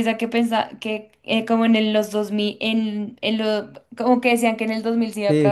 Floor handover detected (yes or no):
yes